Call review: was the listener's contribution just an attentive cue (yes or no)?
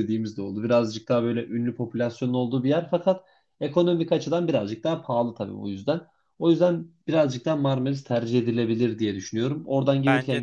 yes